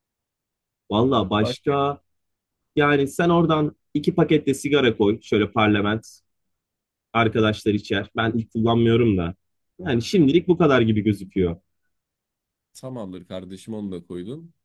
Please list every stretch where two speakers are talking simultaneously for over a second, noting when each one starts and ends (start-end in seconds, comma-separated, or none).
none